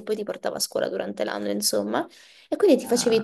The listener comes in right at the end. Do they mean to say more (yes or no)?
no